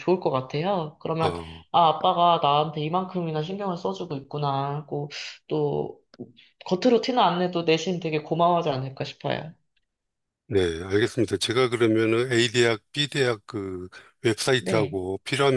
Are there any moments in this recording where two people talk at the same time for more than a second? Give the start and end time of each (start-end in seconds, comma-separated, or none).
none